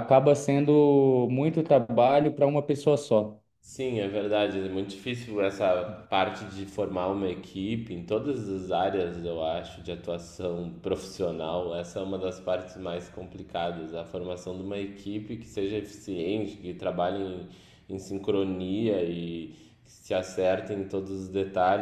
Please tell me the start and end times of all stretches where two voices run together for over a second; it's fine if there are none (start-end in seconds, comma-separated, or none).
none